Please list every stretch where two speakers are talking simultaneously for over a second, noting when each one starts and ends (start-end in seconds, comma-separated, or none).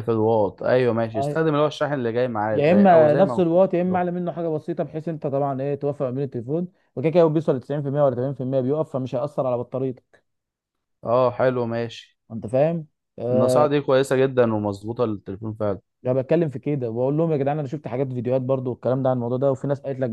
2.5-4.0